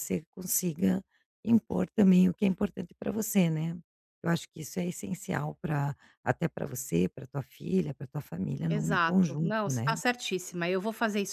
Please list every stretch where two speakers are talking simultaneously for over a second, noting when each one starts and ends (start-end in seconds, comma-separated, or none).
8.7-10.0